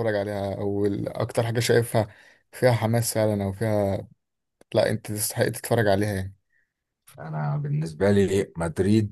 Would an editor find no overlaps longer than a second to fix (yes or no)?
yes